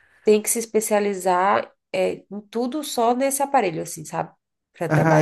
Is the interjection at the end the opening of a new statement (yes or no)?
yes